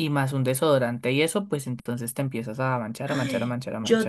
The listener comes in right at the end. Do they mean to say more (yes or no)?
yes